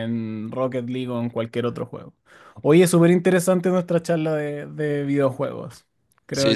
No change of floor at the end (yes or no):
no